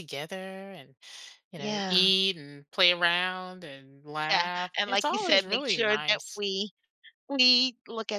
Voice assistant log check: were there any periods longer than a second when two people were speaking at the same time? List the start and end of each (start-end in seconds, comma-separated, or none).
4.3-6.4